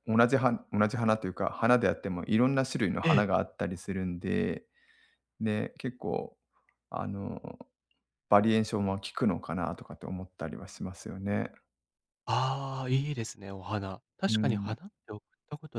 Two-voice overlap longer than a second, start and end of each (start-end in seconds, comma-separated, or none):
none